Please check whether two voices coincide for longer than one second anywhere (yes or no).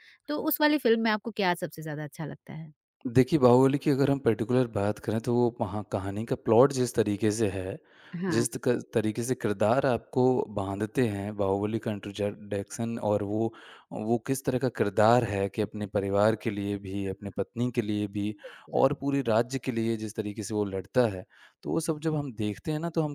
no